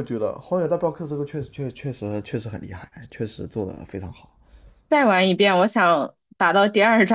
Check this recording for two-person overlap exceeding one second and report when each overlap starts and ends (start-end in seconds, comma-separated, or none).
none